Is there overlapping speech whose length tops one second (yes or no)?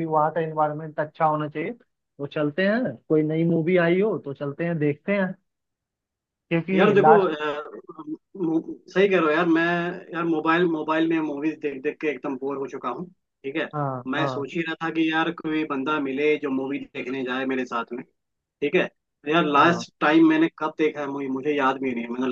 no